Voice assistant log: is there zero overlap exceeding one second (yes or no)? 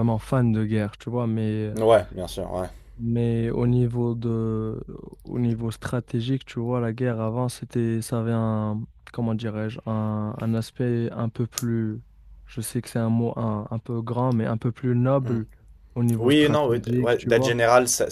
no